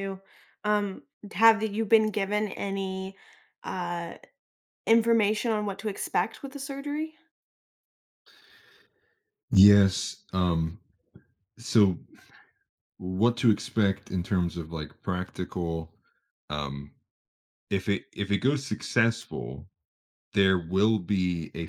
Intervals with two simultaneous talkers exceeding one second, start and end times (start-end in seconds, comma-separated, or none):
none